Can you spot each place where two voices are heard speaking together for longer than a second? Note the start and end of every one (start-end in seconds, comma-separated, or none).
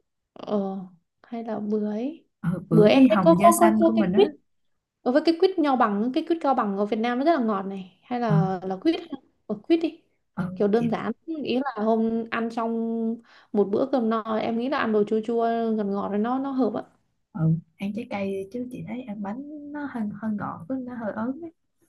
2.7-4.3